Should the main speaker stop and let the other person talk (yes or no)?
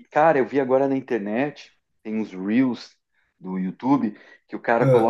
no